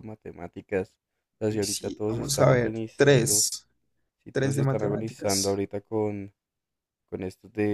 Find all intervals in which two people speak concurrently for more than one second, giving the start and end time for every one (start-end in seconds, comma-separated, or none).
1.5-3.5, 4.3-5.6